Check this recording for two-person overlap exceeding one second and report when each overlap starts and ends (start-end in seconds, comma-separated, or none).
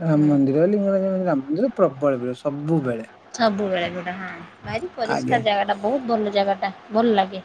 none